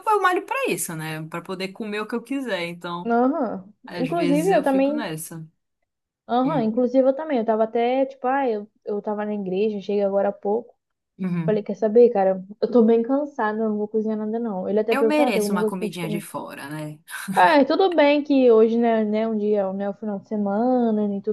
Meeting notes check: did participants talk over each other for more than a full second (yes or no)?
yes